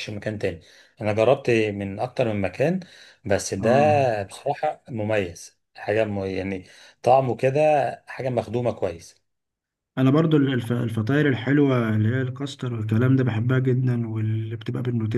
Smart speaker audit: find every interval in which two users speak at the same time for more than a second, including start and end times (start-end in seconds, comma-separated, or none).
none